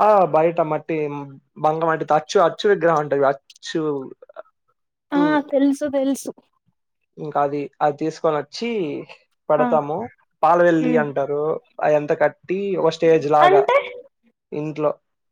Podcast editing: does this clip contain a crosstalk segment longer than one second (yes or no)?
no